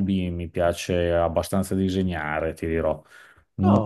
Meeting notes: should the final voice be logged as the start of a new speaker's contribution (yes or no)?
no